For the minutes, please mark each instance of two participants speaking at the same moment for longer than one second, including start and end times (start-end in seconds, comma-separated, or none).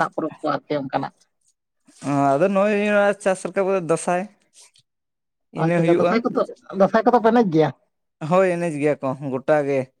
none